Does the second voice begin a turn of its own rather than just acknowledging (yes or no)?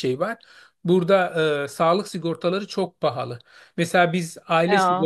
no